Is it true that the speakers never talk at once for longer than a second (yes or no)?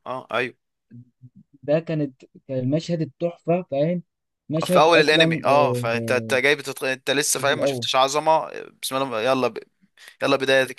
no